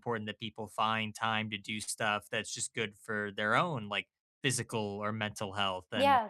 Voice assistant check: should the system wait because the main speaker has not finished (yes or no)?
no